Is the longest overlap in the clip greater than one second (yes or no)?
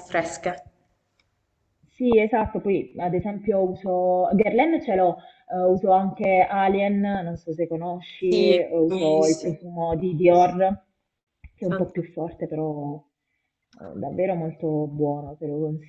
yes